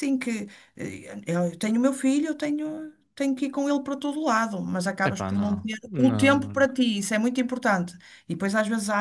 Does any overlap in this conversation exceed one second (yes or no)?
yes